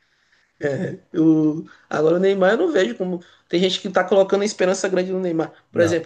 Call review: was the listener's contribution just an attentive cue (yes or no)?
yes